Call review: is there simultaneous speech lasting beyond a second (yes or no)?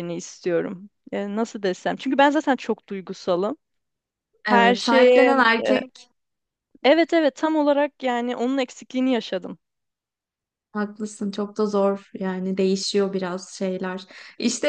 yes